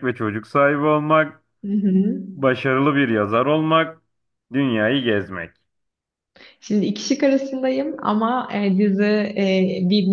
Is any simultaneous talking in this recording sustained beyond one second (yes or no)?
no